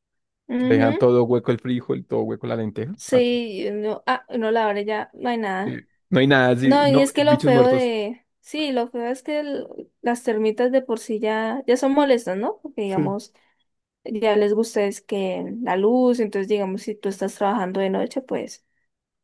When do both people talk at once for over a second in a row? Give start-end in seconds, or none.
6.6-7.9